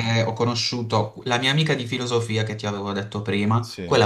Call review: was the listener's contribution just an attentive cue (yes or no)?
yes